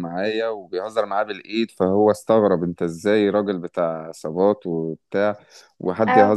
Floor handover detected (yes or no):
no